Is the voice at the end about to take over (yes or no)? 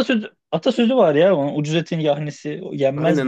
yes